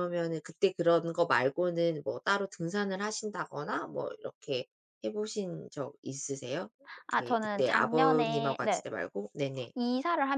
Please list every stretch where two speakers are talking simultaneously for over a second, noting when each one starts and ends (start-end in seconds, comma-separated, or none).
7.2-8.8